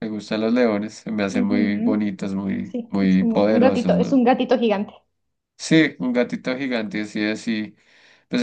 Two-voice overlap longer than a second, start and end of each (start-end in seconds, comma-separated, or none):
1.2-4.2